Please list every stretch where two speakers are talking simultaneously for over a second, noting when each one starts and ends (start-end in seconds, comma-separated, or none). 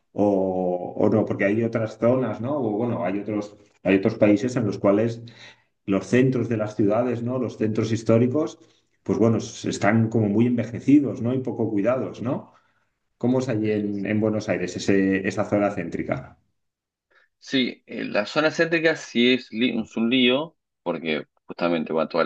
none